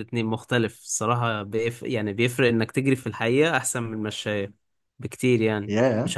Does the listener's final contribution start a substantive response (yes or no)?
no